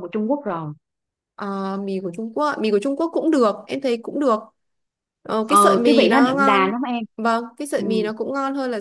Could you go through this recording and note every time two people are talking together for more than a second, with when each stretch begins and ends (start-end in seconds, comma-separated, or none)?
5.5-6.7